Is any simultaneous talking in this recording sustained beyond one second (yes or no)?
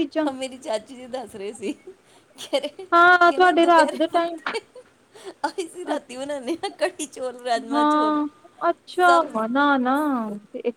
yes